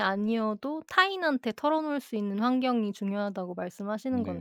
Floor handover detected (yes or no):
yes